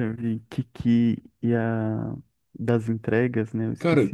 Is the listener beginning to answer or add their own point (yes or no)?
yes